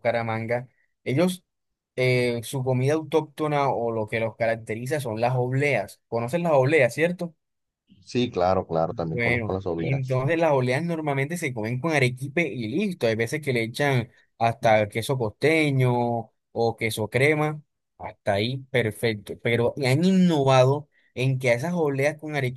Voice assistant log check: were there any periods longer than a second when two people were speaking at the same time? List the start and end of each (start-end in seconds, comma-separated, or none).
8.9-10.2